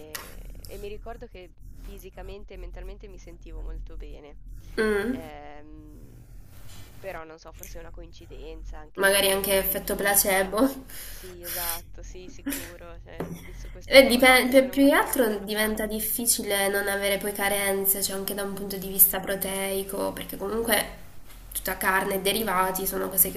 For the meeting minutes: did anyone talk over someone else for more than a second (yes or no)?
yes